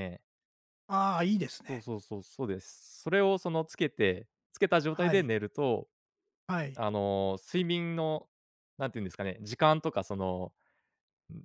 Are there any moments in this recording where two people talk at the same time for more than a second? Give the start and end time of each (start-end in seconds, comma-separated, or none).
none